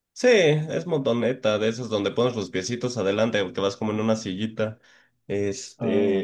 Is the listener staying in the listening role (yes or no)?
yes